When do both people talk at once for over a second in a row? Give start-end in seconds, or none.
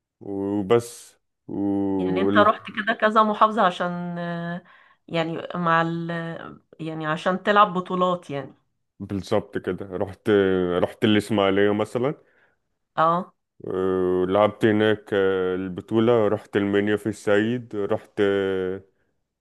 none